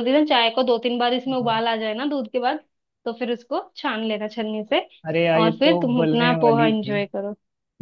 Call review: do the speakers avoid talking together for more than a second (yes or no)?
no